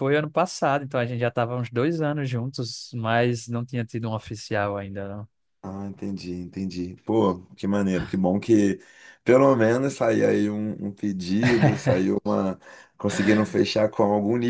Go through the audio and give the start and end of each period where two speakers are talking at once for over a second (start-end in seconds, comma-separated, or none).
none